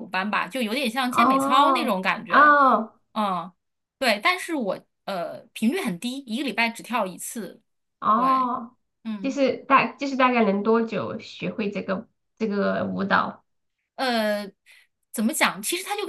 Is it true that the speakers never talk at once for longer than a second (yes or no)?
no